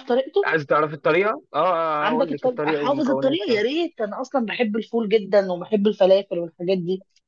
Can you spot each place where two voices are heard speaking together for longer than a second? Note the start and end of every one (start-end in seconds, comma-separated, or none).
2.0-3.6